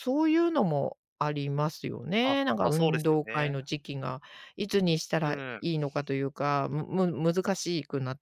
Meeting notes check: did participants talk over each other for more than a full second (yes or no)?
yes